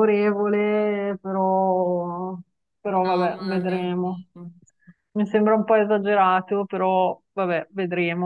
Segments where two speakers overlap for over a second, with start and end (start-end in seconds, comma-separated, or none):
3.0-4.2